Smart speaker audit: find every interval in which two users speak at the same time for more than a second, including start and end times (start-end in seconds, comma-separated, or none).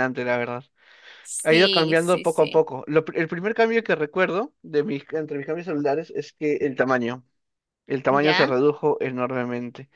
1.4-2.6